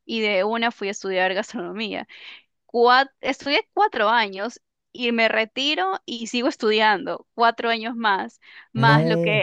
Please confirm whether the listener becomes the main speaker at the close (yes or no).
no